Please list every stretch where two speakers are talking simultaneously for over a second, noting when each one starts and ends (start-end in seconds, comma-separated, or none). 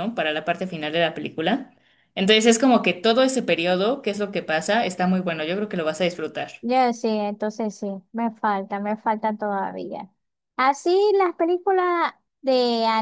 none